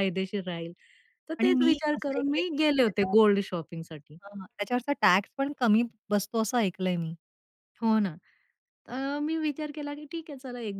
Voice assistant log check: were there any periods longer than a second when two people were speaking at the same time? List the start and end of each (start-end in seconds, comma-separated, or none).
1.4-3.1